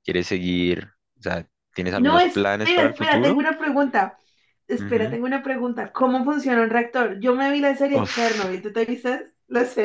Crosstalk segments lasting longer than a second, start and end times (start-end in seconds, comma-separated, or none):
1.9-3.4